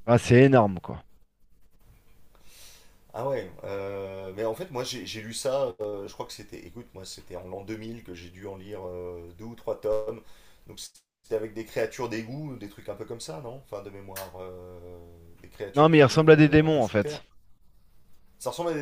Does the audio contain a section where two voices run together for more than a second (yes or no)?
yes